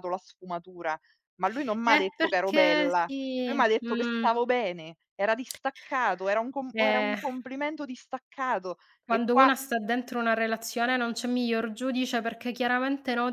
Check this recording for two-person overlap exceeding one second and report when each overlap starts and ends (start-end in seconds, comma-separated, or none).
1.8-4.3